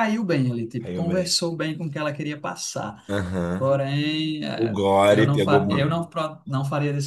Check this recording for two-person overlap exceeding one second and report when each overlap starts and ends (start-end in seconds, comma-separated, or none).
4.6-6.0